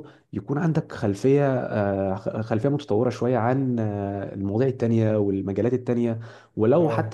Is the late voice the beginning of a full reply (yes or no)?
no